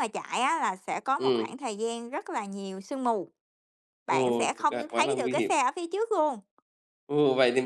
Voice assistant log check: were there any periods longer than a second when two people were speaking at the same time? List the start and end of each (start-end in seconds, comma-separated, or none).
4.1-5.5